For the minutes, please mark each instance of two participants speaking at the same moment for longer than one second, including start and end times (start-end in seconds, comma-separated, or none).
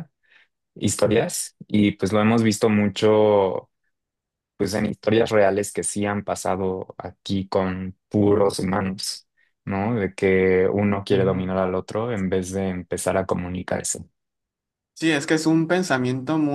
none